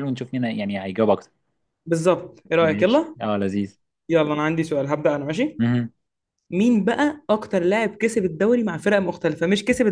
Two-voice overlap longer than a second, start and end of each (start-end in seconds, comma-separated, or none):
none